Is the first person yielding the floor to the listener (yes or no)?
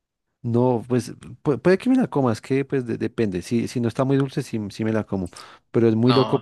no